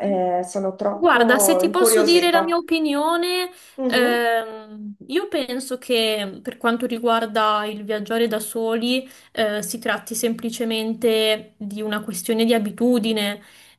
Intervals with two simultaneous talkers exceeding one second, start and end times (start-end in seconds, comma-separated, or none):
0.9-2.6